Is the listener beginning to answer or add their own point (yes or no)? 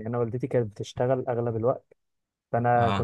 no